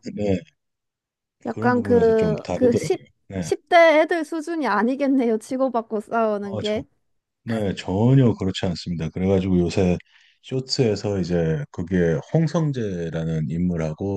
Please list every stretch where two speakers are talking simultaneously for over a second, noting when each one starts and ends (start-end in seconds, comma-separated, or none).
1.5-3.0